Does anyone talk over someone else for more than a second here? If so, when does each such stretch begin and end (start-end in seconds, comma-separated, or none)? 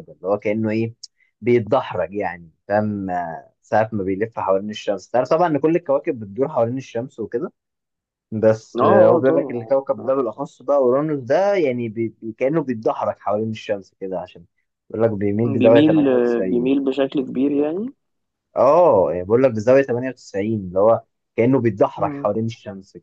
8.8-10.1, 15.4-16.7